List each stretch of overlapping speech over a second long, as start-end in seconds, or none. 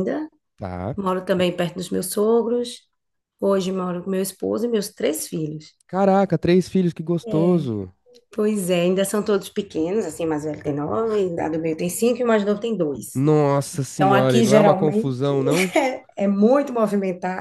13.9-15.3